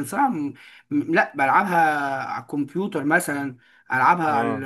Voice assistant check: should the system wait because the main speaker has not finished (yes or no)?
yes